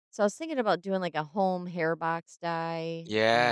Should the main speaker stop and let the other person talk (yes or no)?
yes